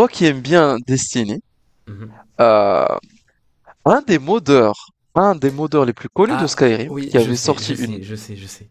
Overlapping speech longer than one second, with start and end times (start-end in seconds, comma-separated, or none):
6.3-8.0